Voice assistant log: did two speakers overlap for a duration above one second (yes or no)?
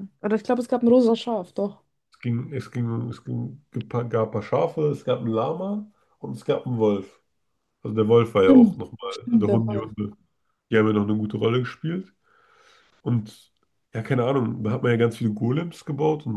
yes